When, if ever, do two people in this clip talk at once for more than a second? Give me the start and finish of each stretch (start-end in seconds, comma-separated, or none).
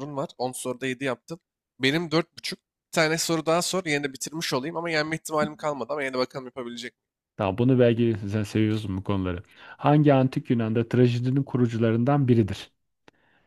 none